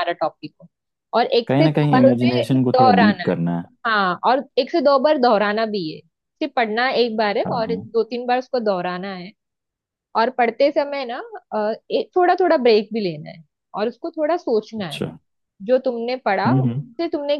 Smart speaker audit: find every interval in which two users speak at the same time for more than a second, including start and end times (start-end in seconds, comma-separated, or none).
1.5-3.3